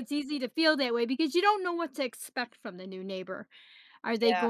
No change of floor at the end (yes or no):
yes